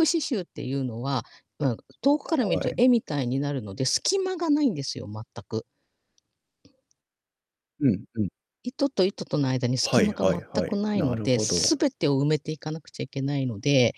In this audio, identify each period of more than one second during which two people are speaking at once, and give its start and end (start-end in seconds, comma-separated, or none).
9.8-11.8